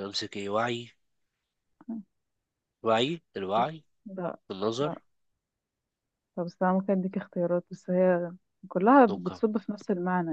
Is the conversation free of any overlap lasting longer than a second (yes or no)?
yes